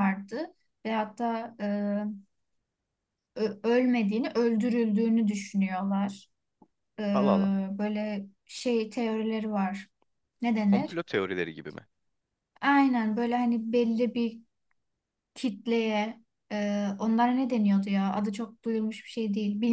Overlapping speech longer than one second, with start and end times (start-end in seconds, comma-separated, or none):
none